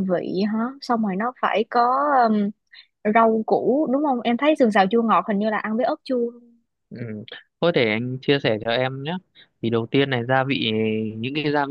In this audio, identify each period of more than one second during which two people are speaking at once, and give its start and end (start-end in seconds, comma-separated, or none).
none